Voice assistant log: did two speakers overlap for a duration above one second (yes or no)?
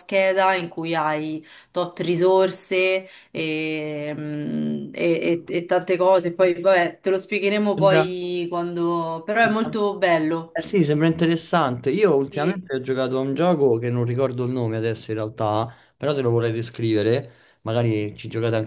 no